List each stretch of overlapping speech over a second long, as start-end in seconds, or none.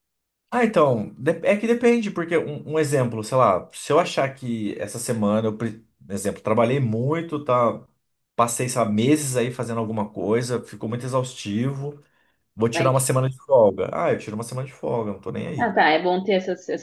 none